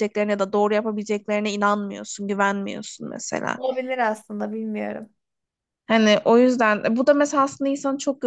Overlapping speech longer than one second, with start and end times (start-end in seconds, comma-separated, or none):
none